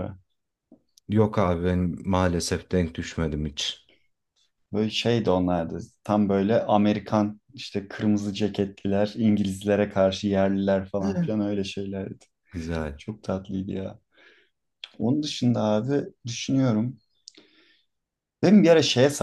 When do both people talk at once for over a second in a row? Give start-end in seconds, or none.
none